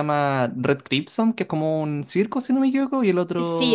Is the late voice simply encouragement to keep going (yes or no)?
no